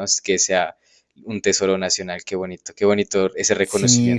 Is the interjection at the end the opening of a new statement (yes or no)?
yes